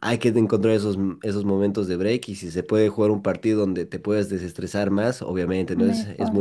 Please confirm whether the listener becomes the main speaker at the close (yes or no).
no